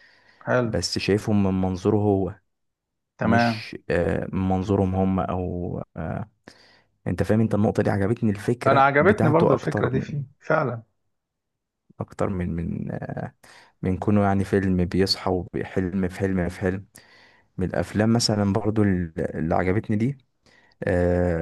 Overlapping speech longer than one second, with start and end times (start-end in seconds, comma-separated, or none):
8.7-10.2